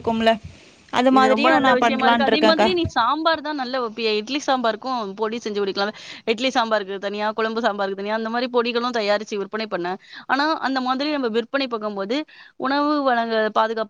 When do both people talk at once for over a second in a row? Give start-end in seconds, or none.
1.2-2.7